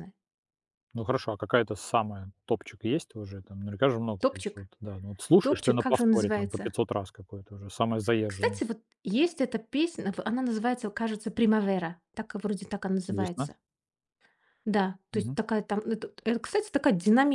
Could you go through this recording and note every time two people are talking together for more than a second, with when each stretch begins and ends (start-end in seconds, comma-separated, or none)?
5.4-6.7